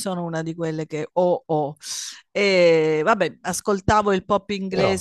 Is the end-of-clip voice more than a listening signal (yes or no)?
no